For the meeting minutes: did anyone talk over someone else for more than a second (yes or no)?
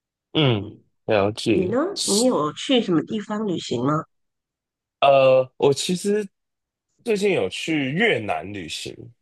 no